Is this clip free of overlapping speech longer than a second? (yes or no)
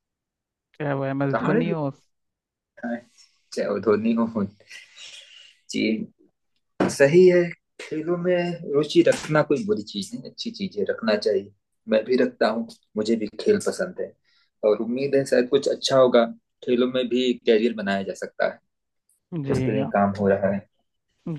yes